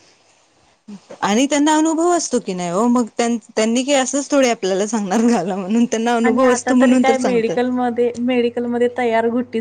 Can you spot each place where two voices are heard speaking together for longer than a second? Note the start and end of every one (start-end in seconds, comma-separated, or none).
6.3-7.6